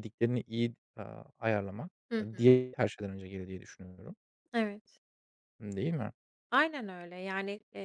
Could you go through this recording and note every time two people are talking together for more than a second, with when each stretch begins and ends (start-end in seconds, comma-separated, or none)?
none